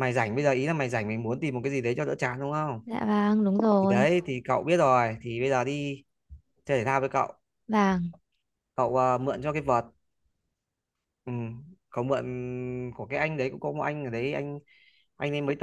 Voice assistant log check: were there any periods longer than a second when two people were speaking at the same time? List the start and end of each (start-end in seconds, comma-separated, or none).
none